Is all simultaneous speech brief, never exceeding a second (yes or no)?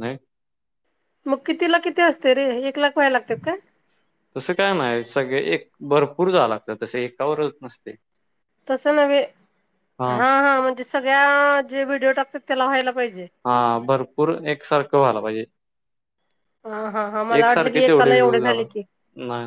no